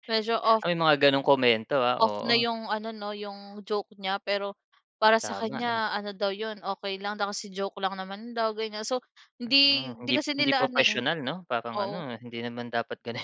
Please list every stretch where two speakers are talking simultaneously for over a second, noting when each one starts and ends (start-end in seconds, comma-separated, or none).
9.4-10.9